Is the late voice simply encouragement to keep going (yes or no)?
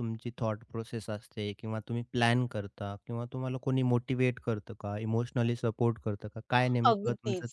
no